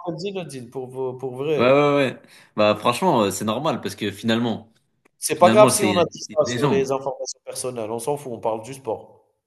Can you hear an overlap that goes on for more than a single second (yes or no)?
yes